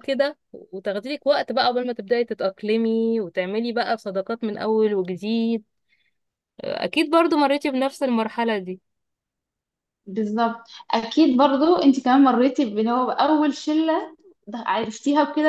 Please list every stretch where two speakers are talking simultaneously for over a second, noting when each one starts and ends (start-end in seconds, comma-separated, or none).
none